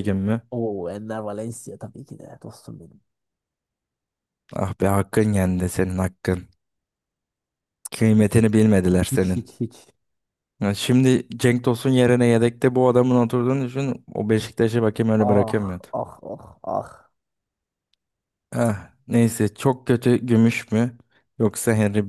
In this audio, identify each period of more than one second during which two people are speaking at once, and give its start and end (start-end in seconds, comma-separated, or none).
none